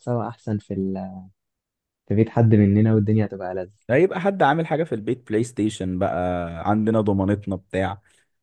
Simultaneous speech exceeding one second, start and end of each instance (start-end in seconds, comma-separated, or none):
none